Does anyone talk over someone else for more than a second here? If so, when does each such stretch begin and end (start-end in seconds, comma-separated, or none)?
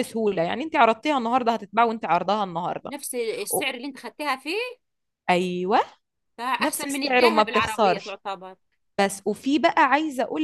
6.6-8.2